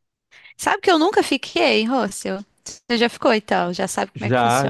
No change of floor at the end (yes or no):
no